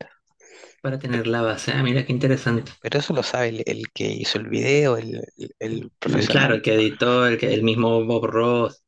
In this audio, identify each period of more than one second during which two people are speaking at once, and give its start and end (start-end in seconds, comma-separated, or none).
none